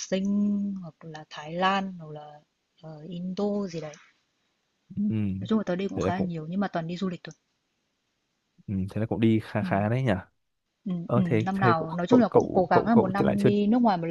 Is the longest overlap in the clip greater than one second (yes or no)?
yes